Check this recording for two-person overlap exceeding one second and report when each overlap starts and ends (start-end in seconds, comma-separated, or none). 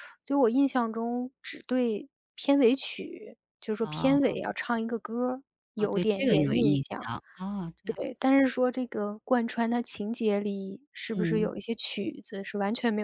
5.8-7.1